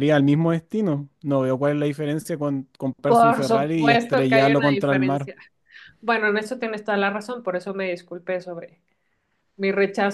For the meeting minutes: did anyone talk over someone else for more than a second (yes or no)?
yes